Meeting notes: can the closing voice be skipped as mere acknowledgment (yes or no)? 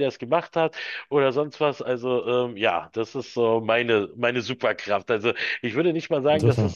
yes